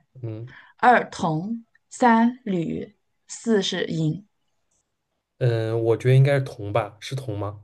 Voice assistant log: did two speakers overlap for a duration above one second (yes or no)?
no